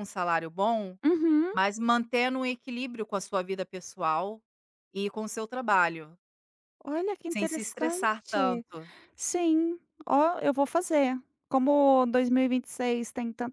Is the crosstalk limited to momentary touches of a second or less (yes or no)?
no